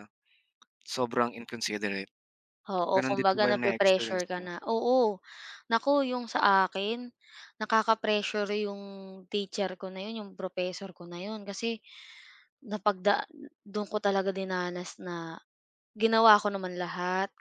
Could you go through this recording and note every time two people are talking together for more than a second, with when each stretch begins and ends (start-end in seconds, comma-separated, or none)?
2.9-4.5